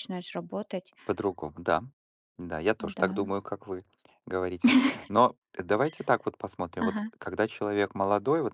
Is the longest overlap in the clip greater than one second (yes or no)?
no